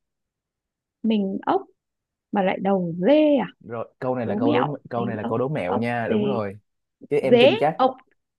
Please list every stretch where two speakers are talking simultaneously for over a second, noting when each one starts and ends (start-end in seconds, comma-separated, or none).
4.2-6.2